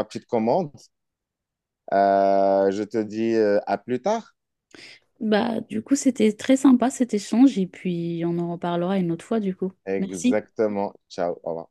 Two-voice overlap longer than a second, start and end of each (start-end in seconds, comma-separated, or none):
none